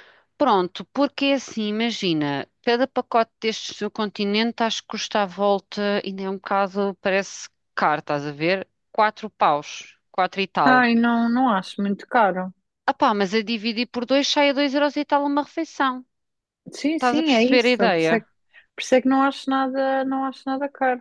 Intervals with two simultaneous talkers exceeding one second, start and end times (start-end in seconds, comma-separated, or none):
16.9-18.1